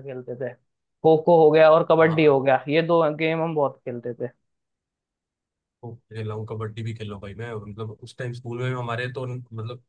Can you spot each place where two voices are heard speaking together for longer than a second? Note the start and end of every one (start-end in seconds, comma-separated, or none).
none